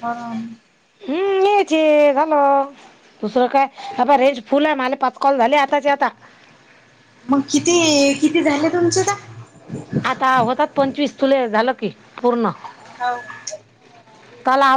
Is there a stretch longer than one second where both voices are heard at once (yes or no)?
no